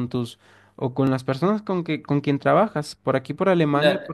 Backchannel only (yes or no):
no